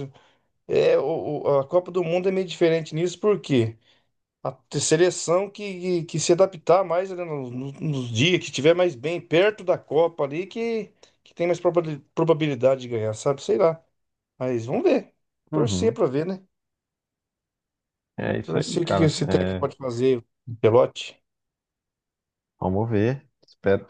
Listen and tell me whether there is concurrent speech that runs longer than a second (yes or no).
yes